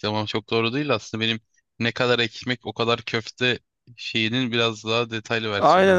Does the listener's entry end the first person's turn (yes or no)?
yes